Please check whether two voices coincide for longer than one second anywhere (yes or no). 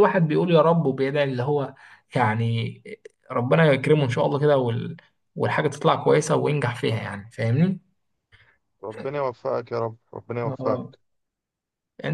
no